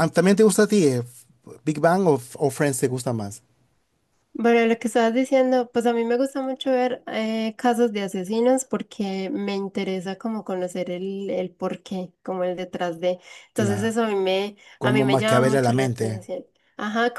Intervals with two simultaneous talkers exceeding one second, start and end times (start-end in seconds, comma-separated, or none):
14.8-16.2